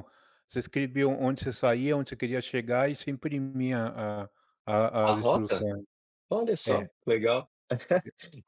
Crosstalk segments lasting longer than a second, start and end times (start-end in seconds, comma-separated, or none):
none